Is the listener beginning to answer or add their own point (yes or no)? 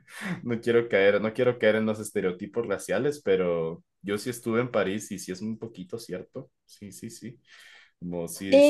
yes